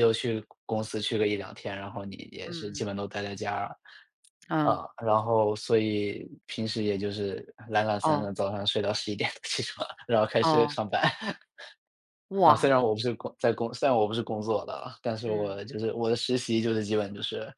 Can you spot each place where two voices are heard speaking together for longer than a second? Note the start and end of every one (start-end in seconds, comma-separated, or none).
none